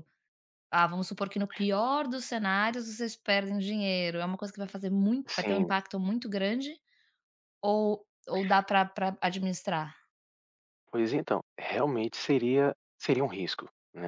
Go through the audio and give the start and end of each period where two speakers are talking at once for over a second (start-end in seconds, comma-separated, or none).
none